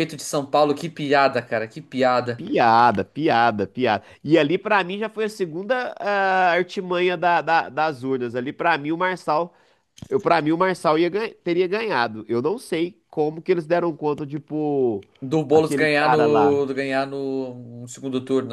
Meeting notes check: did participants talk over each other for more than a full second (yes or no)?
yes